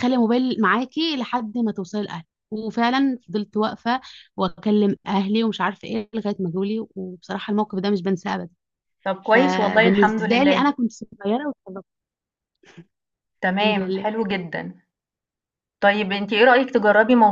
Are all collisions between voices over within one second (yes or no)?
no